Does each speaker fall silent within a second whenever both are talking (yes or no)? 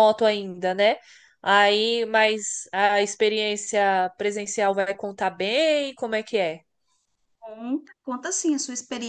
yes